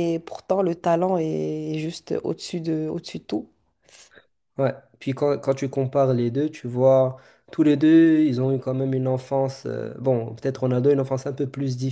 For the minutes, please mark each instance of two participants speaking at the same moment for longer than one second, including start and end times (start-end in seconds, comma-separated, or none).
none